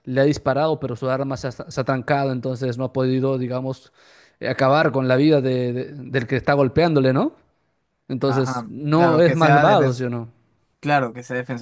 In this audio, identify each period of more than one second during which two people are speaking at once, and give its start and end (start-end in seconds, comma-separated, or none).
8.2-10.1